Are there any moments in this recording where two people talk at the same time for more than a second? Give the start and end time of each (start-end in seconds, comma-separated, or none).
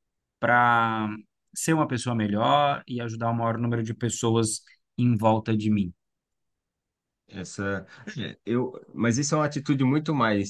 none